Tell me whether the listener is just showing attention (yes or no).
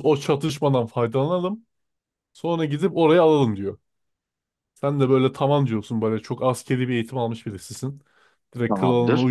yes